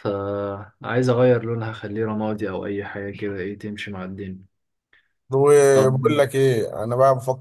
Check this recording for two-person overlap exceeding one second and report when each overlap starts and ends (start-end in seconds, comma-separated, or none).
none